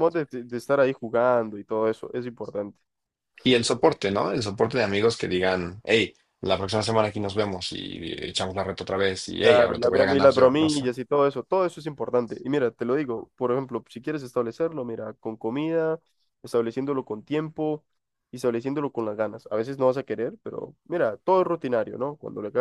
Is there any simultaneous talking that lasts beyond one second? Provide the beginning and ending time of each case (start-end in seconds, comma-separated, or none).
9.4-10.8